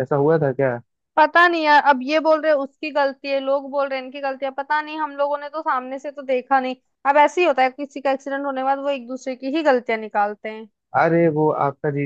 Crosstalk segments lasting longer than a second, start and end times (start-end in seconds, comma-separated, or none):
none